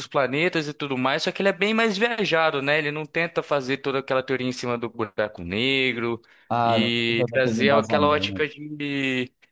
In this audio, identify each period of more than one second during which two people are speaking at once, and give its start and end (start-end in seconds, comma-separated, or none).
6.6-8.5